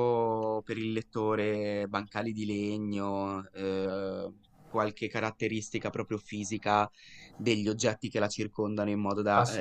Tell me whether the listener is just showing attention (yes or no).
yes